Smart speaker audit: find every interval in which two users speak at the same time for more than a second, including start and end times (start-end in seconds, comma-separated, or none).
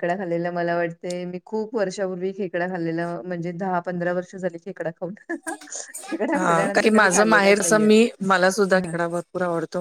6.3-7.9